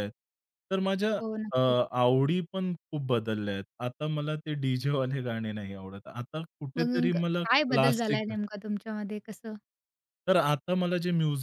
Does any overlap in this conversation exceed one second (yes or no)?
yes